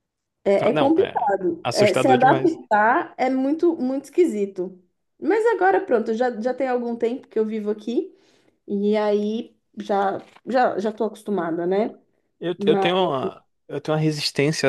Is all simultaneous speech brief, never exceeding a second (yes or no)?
no